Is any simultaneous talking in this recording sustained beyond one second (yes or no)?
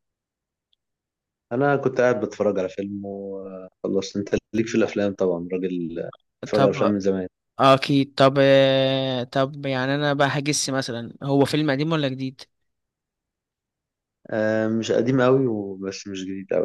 no